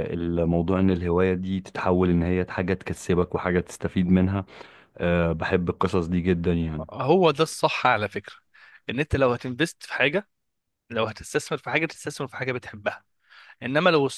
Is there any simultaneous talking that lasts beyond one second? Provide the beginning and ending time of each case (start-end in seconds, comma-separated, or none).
none